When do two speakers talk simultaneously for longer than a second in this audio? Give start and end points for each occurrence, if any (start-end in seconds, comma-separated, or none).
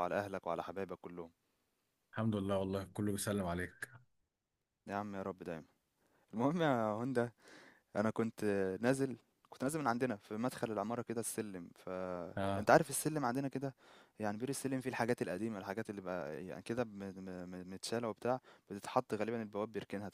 none